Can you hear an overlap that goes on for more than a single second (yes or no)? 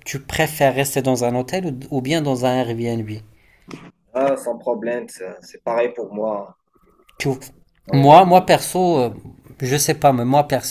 no